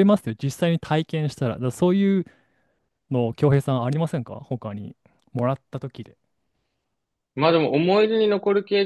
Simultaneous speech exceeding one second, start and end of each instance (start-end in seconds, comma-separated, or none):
none